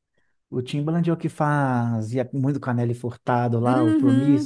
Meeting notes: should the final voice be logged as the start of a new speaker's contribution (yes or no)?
yes